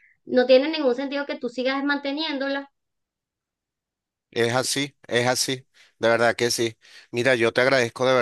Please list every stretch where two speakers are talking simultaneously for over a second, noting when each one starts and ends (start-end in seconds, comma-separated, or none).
none